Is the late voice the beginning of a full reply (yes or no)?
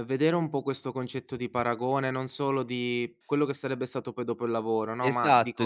yes